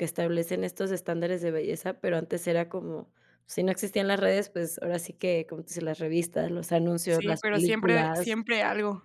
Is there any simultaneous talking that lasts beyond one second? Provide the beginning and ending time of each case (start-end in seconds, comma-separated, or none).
7.0-8.4